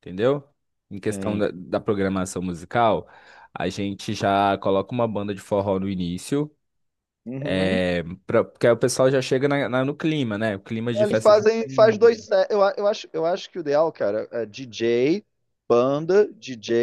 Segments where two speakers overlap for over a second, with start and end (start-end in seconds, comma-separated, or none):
10.9-12.2